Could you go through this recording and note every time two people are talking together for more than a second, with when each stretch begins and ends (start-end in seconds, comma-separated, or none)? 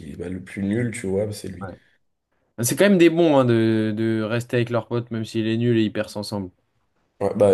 none